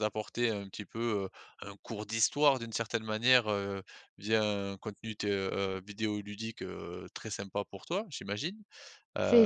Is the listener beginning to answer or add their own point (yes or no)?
yes